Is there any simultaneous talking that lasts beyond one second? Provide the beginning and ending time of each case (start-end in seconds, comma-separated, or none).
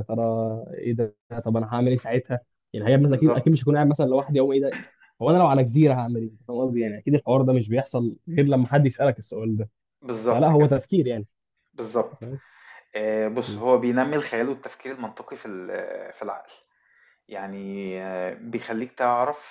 none